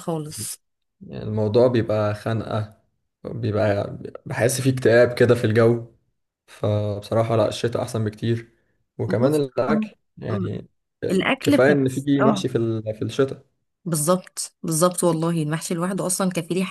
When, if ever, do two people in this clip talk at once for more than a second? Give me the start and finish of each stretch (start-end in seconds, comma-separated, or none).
11.1-12.4